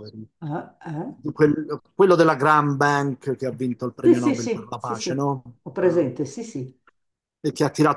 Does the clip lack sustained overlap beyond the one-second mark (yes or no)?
no